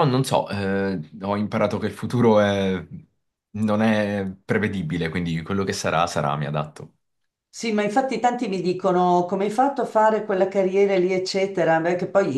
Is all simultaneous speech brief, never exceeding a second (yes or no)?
yes